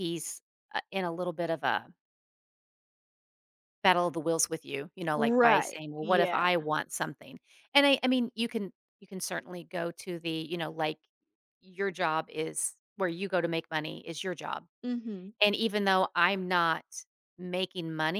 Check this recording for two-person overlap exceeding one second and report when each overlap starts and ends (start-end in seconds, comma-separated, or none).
5.1-6.5